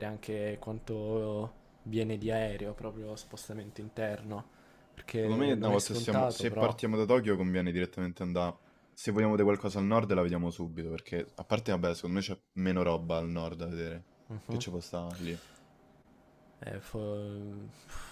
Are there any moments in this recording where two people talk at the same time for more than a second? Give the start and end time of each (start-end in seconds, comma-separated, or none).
5.2-6.8